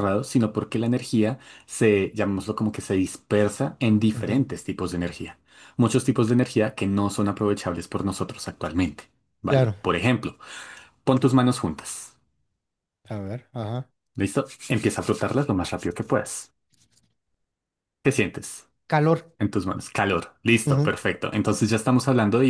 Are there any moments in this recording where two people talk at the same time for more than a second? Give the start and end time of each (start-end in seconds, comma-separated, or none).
none